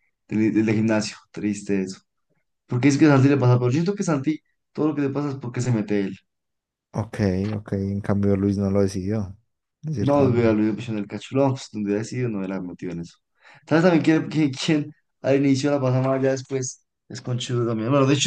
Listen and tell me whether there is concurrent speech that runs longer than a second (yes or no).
no